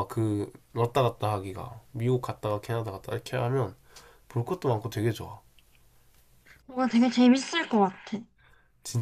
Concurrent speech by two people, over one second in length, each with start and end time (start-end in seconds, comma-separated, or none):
none